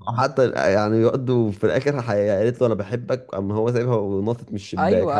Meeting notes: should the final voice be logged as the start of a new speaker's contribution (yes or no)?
yes